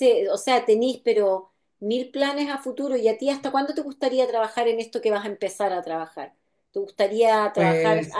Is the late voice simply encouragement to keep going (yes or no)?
yes